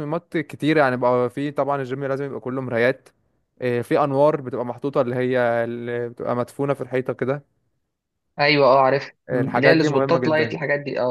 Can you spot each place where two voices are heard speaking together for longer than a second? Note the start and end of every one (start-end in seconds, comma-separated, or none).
9.3-10.6